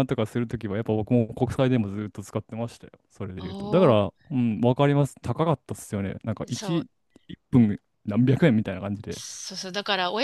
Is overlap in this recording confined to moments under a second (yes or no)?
yes